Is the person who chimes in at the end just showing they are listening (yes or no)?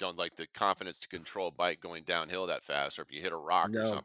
yes